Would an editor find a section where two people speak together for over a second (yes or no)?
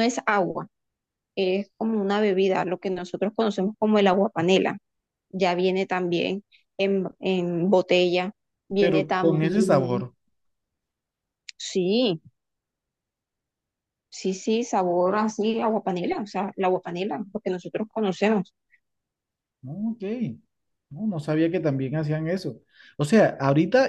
yes